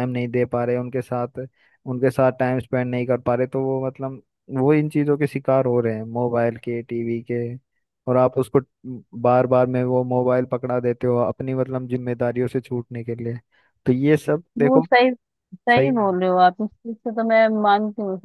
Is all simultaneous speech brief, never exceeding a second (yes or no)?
yes